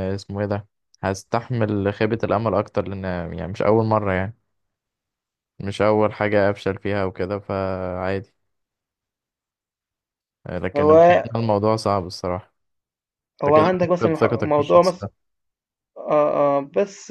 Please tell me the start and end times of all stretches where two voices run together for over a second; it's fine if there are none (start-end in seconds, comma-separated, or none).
13.5-15.1